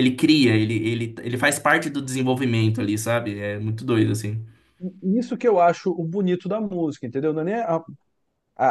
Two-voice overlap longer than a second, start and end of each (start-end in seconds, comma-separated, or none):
none